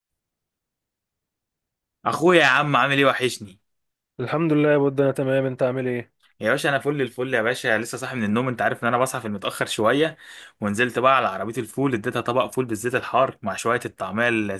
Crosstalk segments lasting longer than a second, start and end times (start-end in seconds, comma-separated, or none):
none